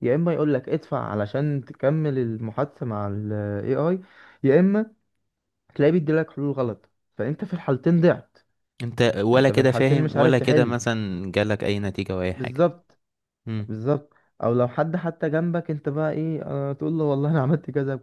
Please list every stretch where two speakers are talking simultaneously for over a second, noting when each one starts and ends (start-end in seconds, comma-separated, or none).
9.3-10.8